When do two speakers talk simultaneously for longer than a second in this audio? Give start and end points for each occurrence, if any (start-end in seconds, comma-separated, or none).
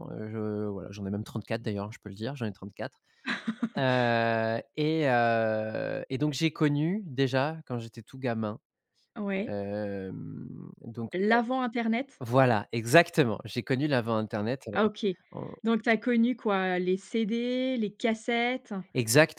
none